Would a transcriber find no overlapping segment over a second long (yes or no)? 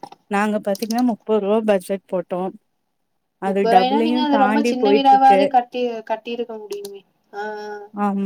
no